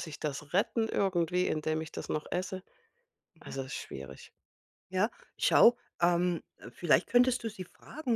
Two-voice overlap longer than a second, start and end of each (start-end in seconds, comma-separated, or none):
none